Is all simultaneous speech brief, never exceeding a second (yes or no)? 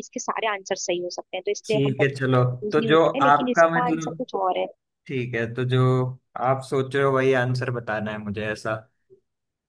no